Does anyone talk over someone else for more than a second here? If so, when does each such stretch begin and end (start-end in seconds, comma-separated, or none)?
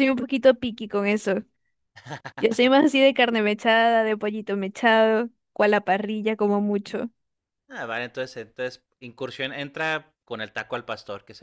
none